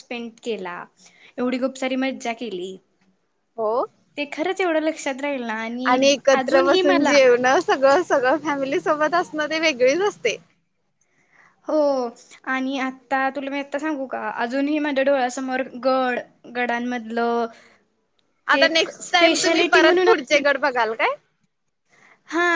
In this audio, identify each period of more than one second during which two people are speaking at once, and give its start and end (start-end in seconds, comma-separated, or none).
18.5-20.4